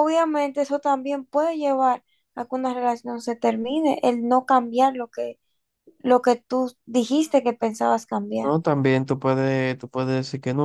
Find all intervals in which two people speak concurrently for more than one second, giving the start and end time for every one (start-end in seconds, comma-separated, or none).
none